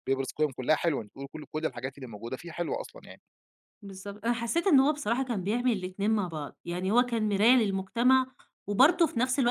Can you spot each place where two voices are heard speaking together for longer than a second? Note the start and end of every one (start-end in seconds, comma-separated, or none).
none